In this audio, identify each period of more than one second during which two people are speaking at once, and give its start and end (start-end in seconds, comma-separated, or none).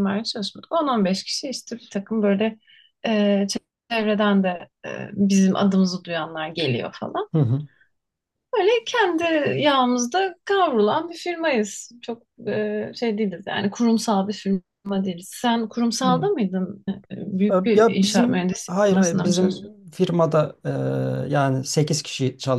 17.5-19.8